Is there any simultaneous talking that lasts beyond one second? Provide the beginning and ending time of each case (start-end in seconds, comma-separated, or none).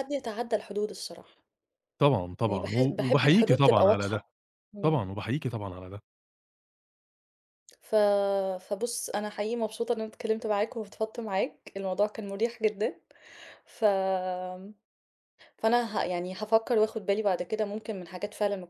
2.5-4.2